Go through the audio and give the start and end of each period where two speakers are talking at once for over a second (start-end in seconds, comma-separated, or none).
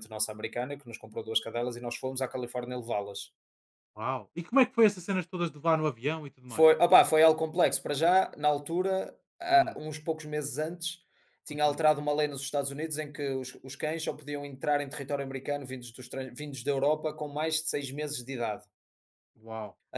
none